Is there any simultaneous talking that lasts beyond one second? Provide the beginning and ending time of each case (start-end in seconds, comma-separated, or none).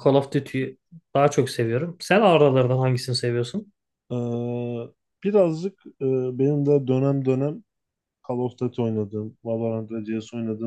none